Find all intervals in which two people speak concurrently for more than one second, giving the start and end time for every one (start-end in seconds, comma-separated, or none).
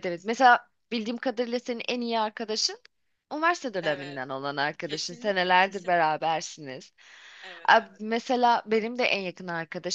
4.8-6.1